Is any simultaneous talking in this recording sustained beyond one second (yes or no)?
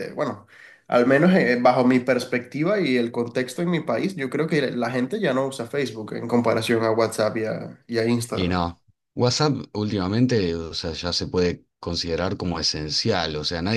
no